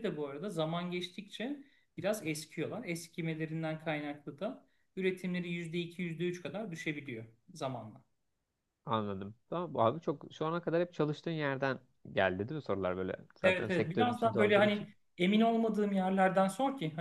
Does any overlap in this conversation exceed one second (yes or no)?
yes